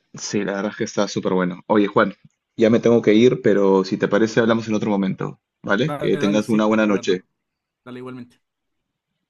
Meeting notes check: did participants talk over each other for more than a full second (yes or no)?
yes